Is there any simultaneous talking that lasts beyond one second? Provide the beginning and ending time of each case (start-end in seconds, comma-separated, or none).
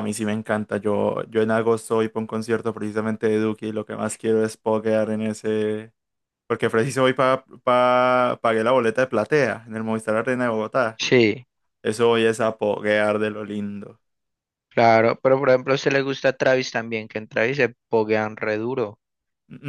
none